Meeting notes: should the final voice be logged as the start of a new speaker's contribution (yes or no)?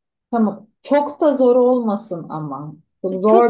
yes